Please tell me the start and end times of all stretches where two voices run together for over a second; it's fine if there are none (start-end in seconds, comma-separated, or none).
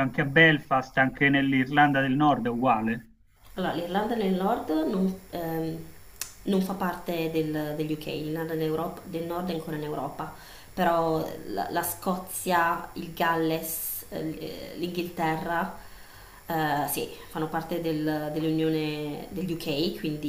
none